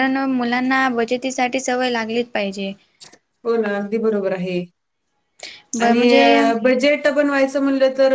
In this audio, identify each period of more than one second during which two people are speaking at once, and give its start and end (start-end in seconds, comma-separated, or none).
none